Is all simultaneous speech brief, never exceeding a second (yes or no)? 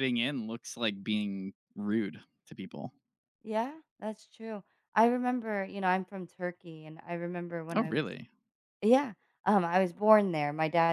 yes